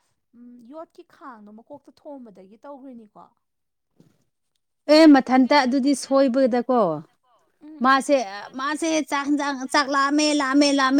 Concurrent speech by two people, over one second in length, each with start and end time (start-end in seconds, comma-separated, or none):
none